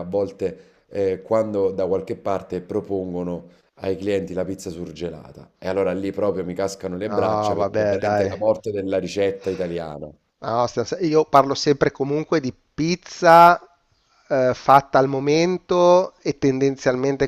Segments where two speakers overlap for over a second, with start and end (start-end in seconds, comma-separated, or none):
7.0-8.4